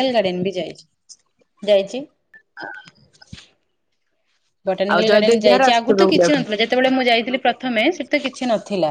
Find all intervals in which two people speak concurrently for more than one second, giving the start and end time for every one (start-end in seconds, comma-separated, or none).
4.9-6.4